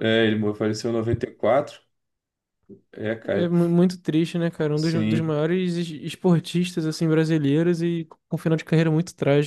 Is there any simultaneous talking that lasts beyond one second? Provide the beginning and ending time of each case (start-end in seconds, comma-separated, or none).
none